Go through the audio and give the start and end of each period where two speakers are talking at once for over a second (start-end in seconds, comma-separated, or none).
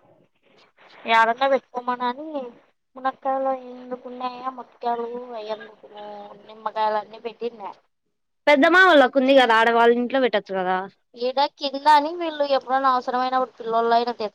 none